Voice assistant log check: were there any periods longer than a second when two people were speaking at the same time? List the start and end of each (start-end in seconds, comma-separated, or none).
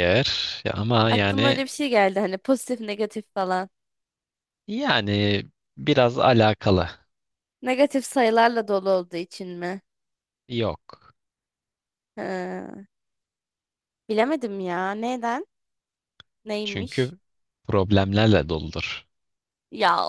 none